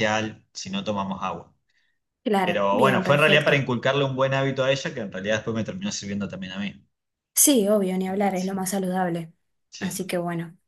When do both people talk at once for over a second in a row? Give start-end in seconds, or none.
2.4-3.7